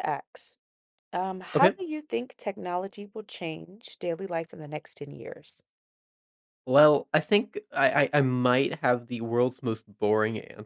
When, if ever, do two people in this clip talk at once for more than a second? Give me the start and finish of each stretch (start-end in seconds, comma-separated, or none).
none